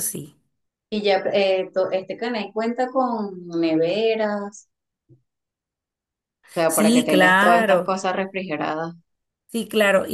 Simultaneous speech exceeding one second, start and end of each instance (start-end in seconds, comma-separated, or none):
6.7-7.9